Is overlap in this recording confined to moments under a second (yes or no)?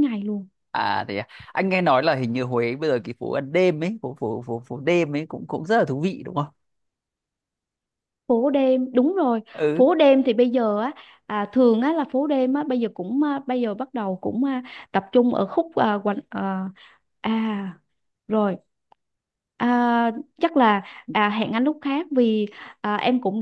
yes